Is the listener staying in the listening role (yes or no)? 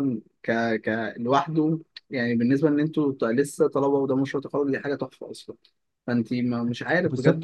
no